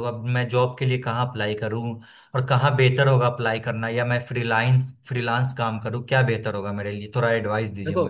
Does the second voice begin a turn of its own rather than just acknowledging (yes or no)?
yes